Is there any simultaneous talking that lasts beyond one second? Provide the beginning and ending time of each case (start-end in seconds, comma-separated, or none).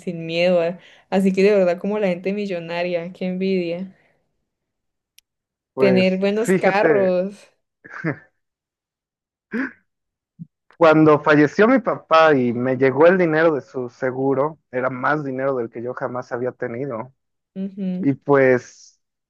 5.8-7.2